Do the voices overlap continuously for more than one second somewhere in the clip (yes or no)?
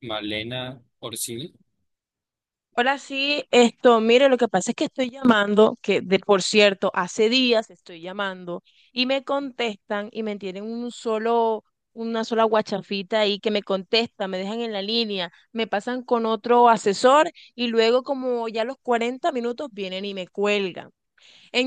no